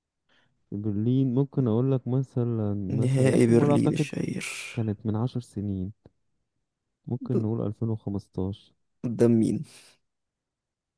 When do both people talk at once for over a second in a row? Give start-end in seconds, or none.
2.9-4.1